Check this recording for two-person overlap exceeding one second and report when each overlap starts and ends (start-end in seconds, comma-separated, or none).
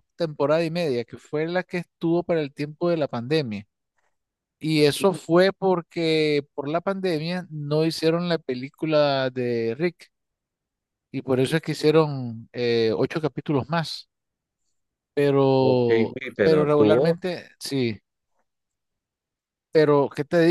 15.6-17.2